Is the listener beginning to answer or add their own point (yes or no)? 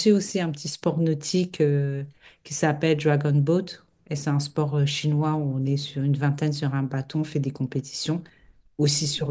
no